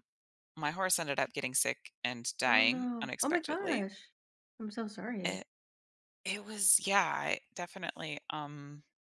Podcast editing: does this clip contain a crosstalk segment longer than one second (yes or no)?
yes